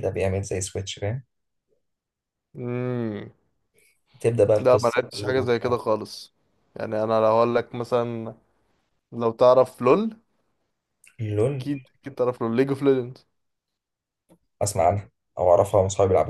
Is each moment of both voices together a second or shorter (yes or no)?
no